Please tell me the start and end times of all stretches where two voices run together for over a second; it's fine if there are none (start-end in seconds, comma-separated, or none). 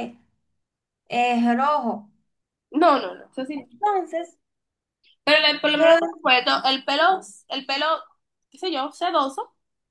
none